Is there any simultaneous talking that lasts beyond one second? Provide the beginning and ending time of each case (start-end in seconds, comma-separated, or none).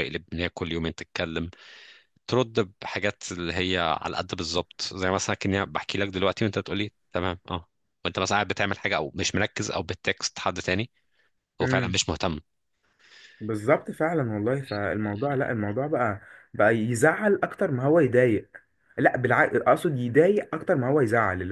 none